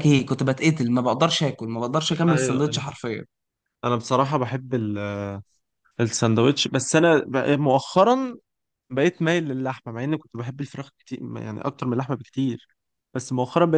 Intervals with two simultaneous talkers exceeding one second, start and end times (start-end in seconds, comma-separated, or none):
none